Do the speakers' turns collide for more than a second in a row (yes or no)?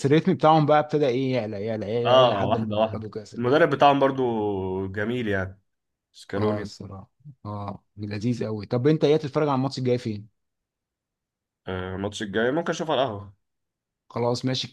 yes